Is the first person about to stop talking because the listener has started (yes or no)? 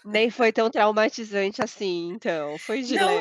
yes